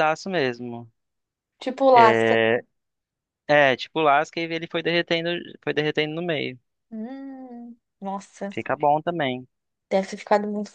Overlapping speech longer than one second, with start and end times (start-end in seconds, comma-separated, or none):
none